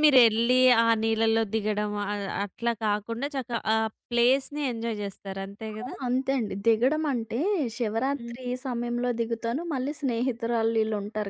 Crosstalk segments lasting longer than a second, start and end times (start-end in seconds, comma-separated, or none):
none